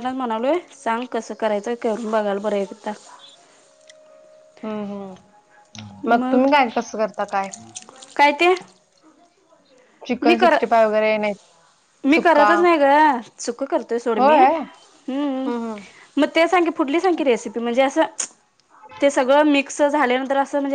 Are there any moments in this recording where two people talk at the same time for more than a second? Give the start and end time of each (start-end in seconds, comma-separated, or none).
none